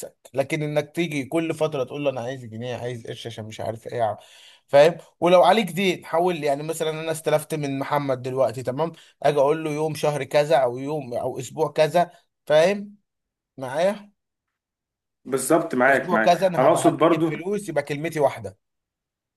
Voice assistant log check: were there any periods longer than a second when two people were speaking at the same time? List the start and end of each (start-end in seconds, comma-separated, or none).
15.9-17.3